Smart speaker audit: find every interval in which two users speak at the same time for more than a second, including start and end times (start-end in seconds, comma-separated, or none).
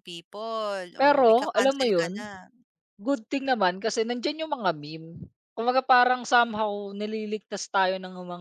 1.0-2.3